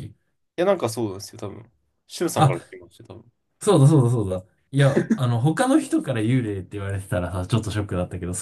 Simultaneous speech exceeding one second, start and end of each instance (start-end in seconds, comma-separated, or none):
none